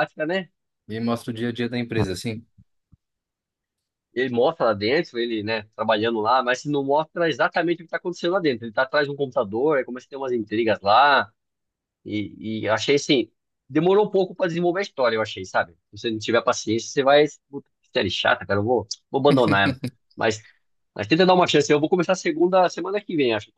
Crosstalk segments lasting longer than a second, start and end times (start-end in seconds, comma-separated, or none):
none